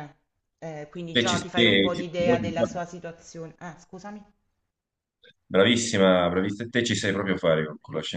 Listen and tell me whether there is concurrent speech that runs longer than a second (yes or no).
yes